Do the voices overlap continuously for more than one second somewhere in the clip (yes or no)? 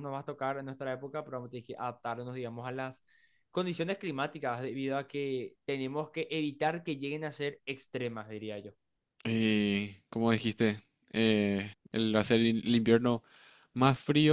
no